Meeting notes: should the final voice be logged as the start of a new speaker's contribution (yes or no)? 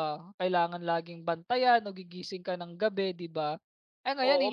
yes